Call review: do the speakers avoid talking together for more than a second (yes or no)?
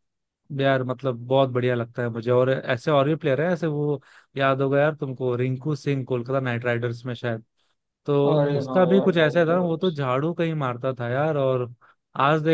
no